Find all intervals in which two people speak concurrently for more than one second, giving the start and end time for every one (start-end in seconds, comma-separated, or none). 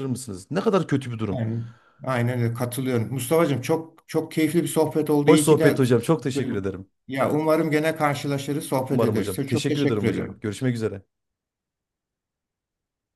8.9-10.4